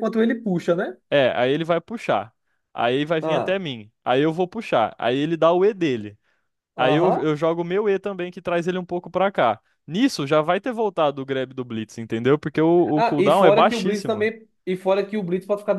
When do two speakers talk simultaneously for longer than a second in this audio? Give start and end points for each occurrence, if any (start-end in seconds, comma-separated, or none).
12.9-14.3